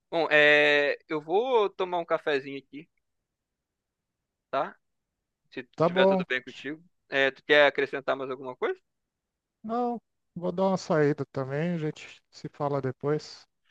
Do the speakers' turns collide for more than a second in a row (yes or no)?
no